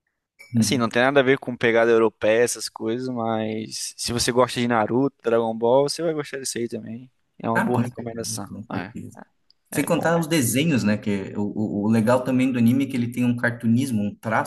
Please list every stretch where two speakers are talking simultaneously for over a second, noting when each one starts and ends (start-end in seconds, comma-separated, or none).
7.5-8.9